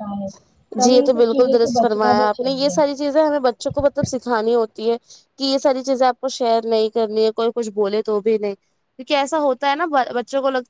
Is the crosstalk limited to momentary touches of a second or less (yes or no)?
no